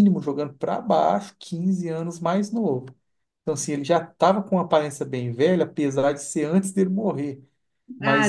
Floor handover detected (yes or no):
yes